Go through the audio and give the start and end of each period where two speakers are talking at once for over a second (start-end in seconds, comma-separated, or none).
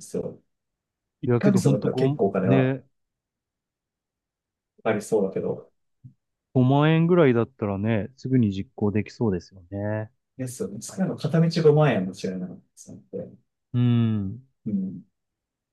1.3-2.8